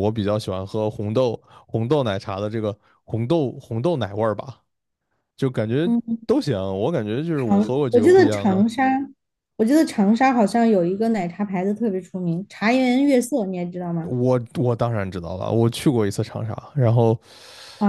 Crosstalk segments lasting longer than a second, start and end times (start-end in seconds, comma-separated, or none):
7.4-8.6